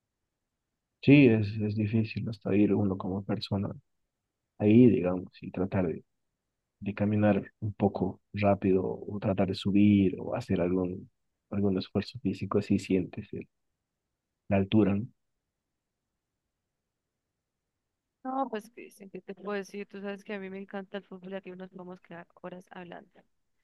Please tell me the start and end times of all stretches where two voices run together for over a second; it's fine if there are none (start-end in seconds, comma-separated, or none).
none